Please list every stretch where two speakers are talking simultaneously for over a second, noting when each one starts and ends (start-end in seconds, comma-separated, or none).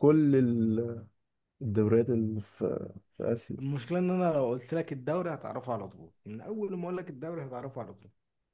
none